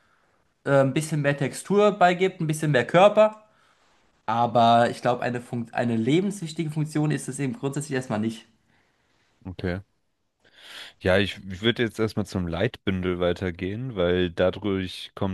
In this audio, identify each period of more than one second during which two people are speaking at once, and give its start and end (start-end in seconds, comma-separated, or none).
none